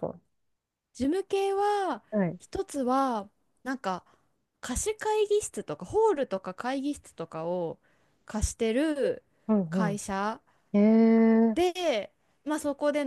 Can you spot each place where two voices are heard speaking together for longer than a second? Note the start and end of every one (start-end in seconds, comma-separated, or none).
none